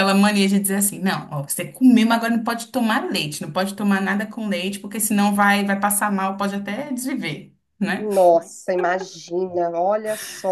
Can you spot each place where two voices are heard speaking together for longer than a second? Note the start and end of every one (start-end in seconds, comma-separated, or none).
none